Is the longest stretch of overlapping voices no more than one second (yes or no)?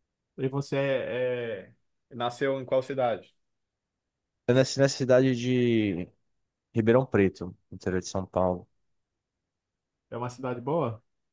yes